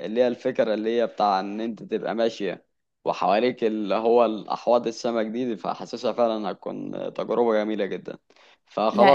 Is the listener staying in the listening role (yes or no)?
no